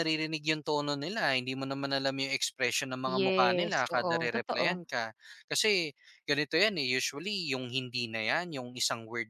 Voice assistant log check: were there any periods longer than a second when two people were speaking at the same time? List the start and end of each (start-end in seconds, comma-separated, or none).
3.2-4.8